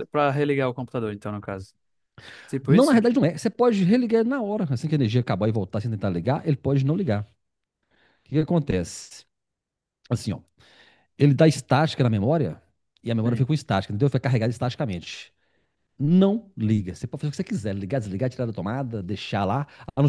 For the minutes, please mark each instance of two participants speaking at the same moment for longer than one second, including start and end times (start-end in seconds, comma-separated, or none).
none